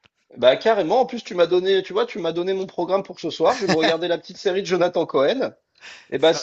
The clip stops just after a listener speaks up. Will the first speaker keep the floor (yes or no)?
yes